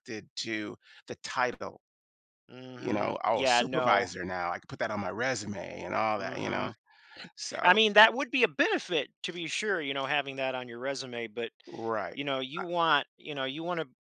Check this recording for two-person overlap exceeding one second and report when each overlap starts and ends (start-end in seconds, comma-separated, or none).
2.8-4.1